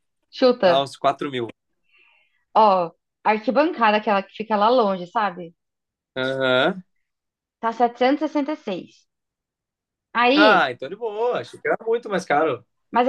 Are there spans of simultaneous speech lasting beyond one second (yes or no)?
no